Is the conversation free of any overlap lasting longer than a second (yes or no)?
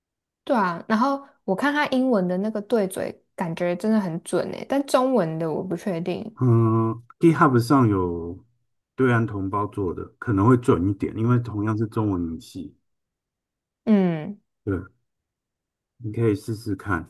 yes